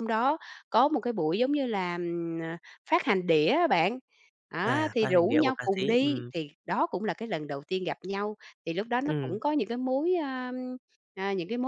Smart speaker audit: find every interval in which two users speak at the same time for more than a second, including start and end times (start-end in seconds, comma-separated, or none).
4.6-6.3